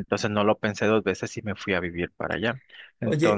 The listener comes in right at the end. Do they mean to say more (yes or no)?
yes